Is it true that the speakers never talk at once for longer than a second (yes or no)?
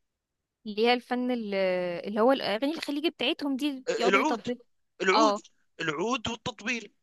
yes